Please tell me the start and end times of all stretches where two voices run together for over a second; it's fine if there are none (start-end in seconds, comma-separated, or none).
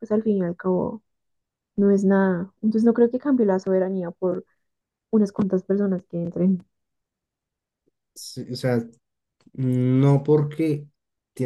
none